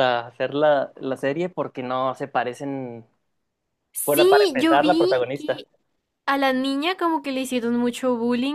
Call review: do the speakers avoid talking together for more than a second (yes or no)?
no